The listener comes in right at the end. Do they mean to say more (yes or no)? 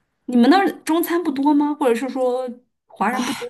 yes